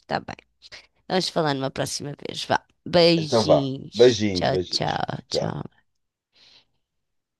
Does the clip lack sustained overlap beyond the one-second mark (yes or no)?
no